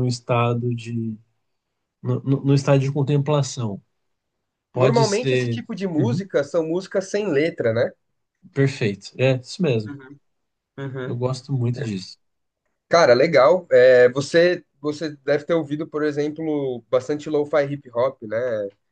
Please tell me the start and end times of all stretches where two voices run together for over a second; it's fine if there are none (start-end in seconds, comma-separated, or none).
4.7-6.2